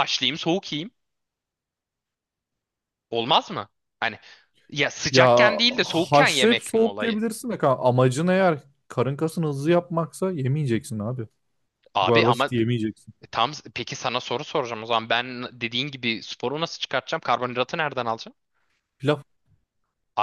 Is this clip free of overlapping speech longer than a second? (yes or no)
no